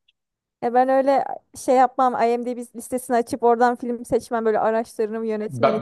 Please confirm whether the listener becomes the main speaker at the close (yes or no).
yes